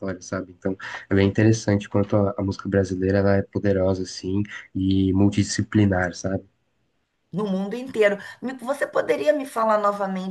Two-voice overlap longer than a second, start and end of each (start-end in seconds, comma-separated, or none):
none